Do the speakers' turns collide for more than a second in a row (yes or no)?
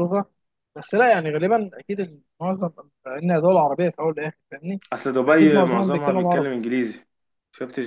yes